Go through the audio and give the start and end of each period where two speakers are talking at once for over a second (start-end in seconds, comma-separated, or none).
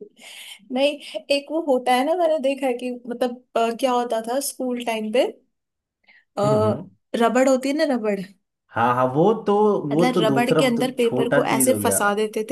9.9-12.0